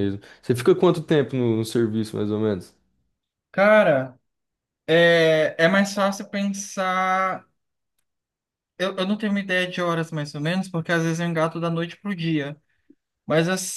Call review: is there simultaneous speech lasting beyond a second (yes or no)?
no